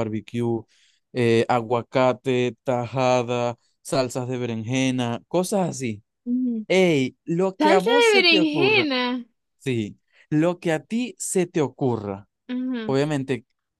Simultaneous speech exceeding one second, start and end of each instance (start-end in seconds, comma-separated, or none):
7.6-8.9